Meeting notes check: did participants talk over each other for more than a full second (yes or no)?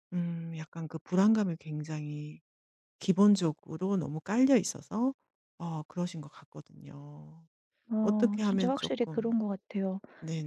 yes